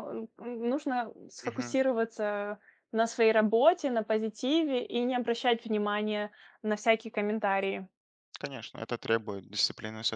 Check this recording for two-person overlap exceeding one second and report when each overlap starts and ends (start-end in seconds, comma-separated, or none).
none